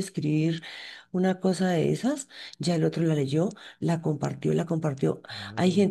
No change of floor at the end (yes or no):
yes